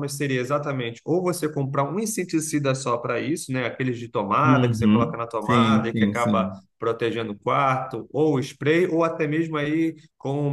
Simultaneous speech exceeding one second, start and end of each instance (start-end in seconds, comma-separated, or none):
4.4-6.6